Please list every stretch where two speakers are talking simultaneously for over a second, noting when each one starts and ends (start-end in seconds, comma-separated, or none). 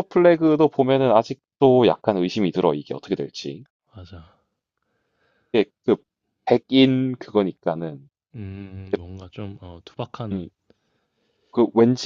none